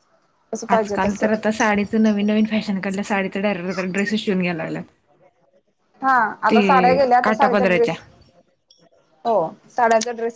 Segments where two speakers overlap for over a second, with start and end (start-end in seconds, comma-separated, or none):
6.5-7.9